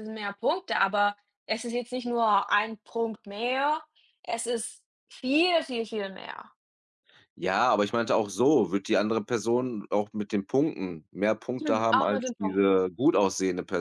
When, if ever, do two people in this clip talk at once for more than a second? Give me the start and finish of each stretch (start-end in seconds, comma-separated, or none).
11.6-12.8